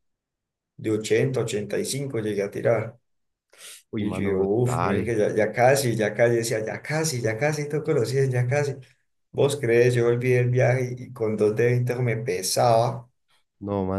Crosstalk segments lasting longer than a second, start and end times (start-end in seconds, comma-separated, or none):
4.0-5.2